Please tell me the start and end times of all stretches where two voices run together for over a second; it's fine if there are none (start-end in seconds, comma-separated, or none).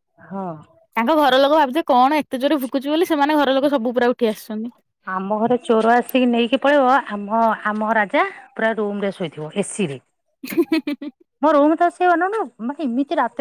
none